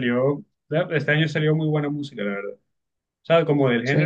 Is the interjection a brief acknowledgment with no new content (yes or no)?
yes